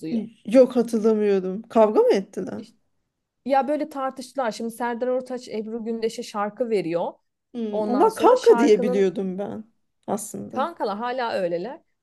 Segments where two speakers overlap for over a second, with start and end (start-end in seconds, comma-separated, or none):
7.7-9.1